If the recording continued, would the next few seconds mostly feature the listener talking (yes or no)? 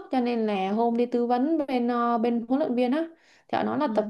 no